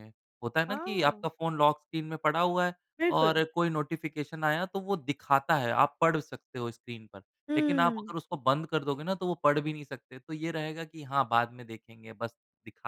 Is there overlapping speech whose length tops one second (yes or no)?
no